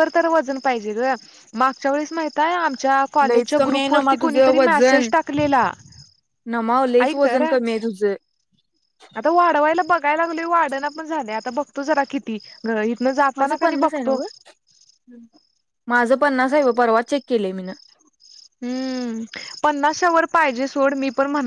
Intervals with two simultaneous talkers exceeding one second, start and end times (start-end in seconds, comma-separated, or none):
3.3-5.1